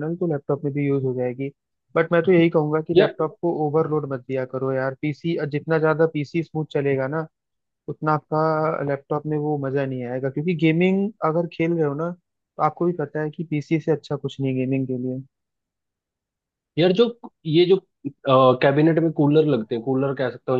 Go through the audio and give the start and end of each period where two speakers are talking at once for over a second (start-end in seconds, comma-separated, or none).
none